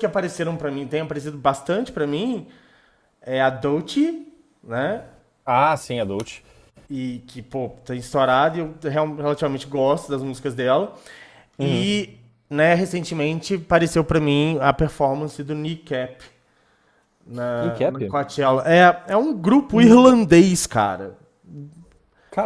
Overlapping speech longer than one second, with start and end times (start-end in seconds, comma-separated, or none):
none